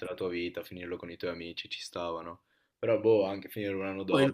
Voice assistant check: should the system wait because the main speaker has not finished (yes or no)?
no